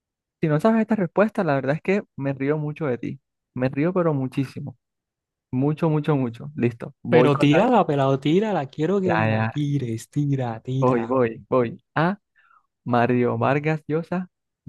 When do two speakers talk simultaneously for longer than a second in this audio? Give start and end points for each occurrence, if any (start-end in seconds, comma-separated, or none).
none